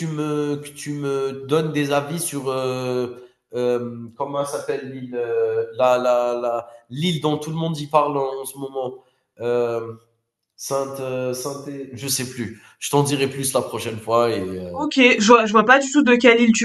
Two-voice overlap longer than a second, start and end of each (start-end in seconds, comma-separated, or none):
none